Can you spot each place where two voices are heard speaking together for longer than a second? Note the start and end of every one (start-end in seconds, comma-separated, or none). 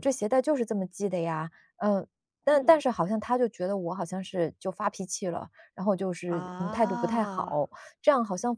6.3-7.6